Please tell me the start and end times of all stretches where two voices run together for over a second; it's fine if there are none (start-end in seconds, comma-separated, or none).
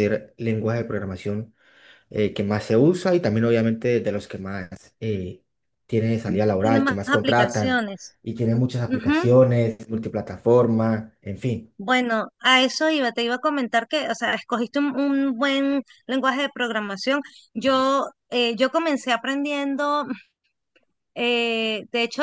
6.6-7.8